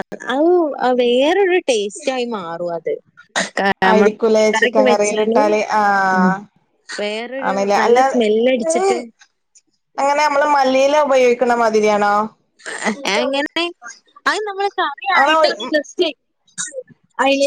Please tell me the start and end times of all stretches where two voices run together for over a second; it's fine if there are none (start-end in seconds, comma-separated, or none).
3.9-5.4